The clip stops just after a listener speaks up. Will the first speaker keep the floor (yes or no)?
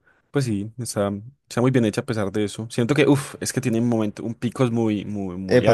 no